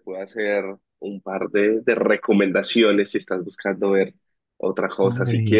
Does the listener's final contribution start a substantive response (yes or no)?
yes